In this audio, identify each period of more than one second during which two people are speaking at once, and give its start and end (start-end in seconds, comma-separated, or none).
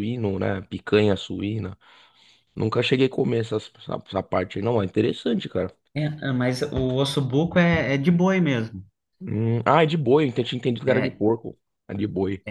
none